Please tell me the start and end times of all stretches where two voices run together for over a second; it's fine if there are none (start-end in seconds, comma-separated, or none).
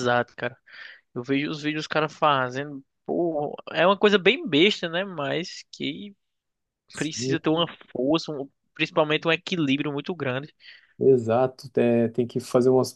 none